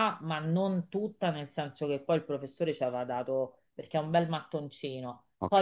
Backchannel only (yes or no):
yes